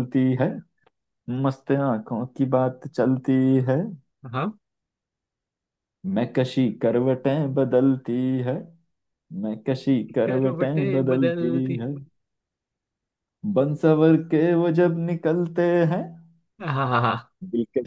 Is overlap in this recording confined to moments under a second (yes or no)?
no